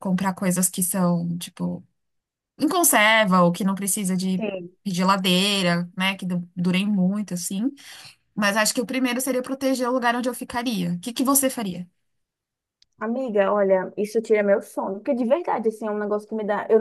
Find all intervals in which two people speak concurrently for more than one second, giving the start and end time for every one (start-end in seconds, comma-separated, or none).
none